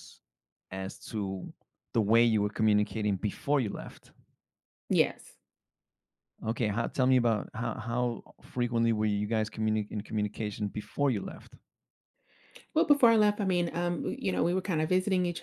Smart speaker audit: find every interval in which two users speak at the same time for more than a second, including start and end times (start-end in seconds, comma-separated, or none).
none